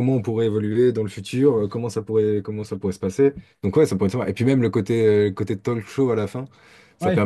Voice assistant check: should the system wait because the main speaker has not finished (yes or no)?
yes